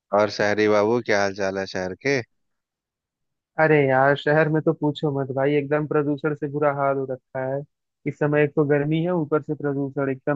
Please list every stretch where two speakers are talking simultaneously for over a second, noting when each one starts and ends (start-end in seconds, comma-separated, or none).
none